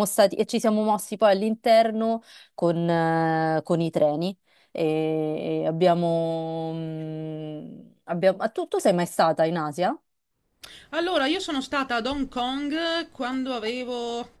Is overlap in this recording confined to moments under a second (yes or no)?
yes